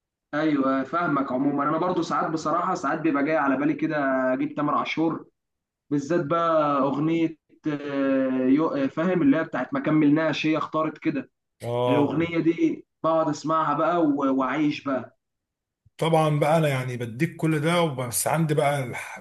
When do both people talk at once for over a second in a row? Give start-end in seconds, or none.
none